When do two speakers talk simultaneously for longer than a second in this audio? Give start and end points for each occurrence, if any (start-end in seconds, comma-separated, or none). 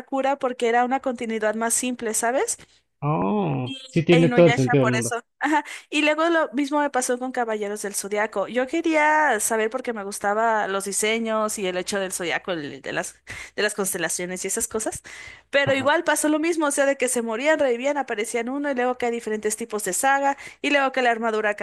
3.6-5.2